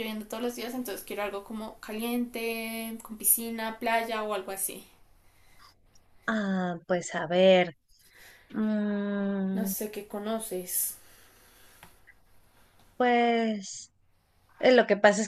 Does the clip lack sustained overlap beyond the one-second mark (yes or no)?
yes